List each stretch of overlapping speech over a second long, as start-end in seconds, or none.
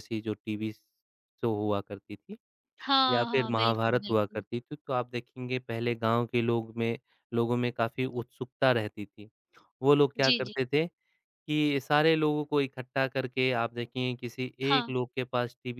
3.1-4.4